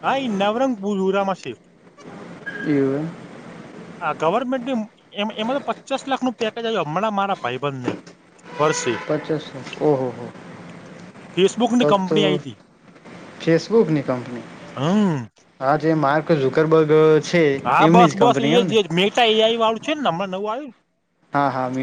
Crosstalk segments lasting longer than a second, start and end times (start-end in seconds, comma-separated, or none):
none